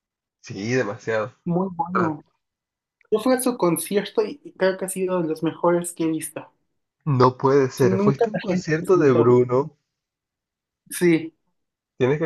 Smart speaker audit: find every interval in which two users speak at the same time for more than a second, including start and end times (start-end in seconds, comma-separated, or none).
7.8-9.4